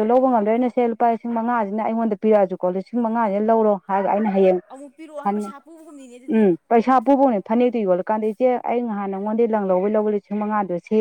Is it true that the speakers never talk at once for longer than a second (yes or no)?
no